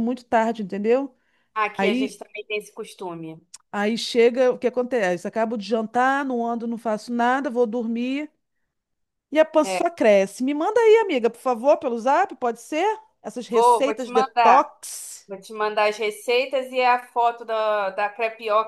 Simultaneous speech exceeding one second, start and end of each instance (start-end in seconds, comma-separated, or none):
13.5-14.7